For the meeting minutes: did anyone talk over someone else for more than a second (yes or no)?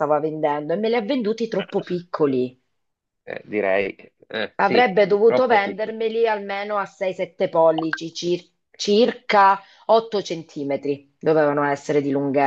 yes